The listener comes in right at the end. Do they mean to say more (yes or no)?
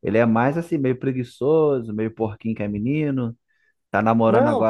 no